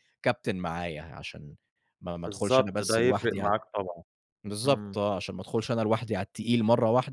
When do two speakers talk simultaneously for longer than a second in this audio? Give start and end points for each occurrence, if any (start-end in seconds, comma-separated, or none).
2.2-3.5